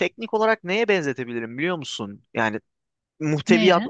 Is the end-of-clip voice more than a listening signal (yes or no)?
no